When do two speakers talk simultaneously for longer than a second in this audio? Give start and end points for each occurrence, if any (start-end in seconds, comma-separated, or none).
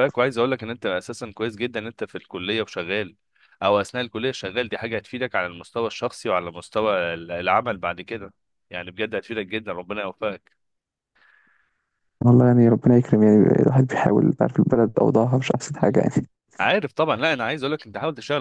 none